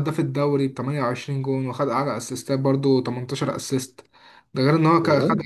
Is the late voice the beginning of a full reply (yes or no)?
no